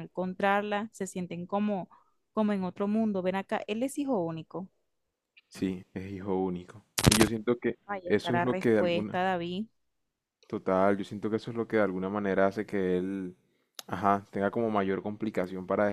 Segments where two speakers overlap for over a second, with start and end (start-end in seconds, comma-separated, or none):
7.9-9.2